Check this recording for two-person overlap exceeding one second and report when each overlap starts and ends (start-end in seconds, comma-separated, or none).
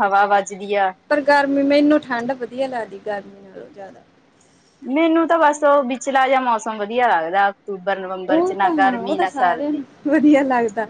8.3-9.8